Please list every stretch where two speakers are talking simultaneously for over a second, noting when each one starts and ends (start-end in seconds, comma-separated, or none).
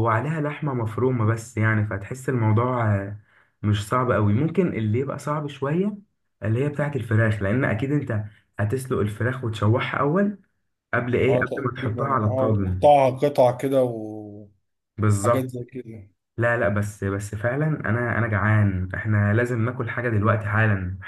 11.3-12.9